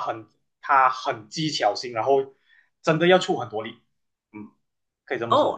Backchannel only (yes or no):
no